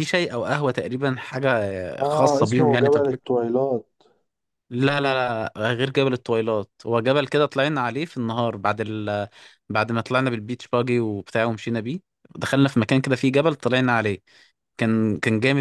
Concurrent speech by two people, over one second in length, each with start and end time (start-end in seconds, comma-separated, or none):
2.0-3.2